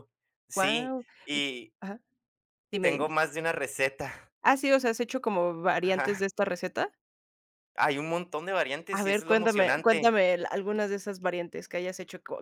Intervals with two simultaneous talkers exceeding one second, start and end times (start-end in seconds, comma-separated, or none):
9.0-10.2